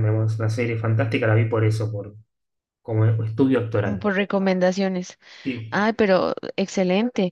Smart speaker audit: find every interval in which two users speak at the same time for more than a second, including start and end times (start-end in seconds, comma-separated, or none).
none